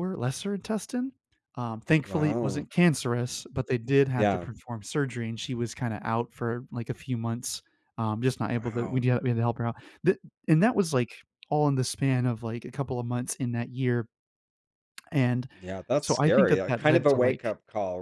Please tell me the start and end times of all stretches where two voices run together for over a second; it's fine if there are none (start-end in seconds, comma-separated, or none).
16.0-17.4